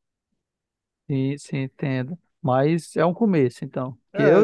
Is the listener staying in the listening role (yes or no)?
no